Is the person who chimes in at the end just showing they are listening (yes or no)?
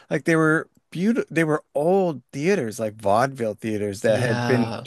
yes